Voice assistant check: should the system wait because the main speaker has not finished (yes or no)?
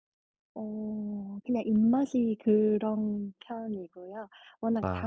yes